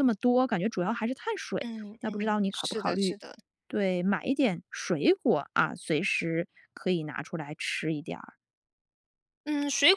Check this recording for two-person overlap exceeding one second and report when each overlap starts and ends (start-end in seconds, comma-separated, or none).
1.6-3.2